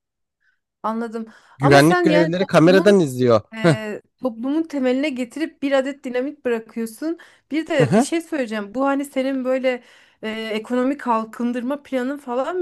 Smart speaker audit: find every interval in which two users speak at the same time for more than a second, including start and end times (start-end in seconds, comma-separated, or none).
1.6-2.9